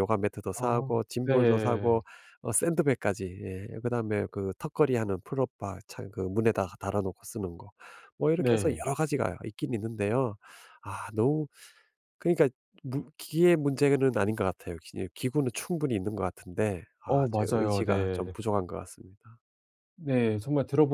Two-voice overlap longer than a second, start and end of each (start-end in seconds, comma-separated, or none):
0.5-2.0, 17.1-18.3